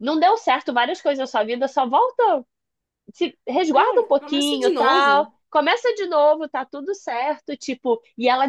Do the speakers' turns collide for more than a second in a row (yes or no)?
yes